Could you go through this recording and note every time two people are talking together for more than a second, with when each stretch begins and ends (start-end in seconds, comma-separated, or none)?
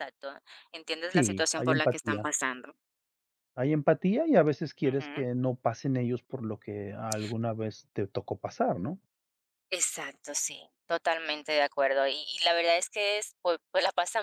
1.1-2.3